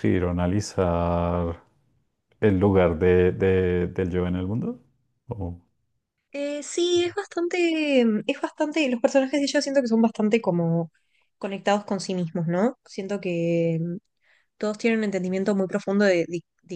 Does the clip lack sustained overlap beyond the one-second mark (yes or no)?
yes